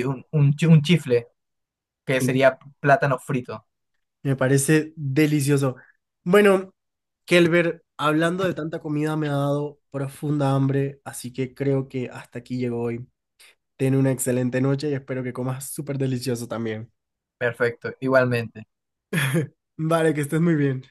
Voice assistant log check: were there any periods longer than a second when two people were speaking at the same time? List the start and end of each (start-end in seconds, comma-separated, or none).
none